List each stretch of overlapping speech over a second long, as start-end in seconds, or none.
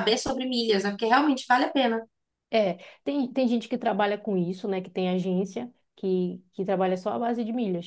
none